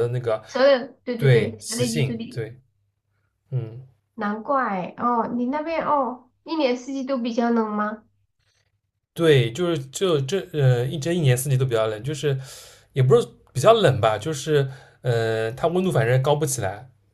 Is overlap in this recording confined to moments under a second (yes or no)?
no